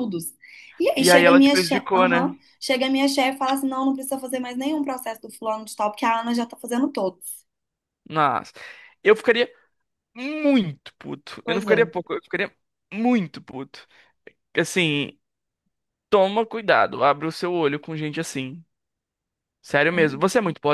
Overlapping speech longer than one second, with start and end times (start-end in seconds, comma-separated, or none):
0.9-2.3